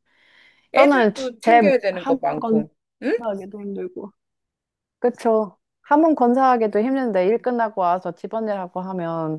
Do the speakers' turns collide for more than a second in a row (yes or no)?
yes